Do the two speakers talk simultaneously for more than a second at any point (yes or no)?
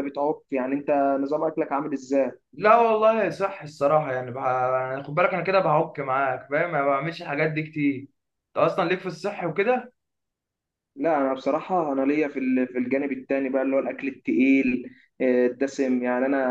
no